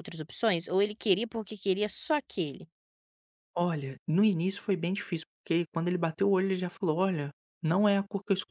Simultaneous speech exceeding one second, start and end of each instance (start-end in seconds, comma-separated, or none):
none